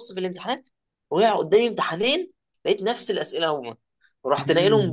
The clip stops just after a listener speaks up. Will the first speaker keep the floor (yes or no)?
yes